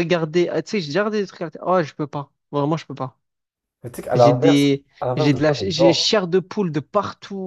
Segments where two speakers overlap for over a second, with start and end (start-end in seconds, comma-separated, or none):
4.1-6.1